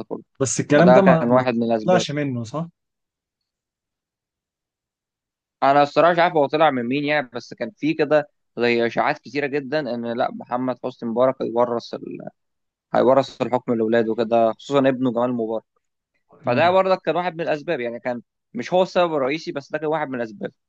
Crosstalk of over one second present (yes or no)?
yes